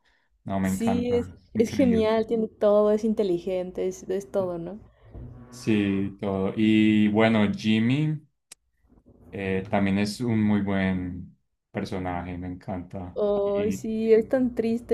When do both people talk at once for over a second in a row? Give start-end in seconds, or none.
0.6-2.1